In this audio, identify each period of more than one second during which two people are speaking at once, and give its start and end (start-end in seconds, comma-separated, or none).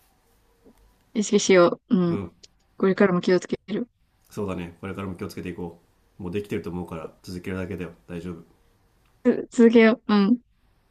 none